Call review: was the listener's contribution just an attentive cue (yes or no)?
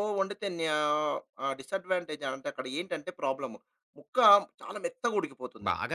no